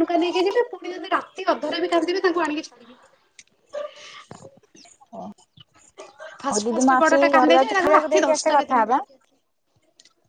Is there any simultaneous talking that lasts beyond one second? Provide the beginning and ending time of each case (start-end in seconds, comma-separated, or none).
6.7-9.0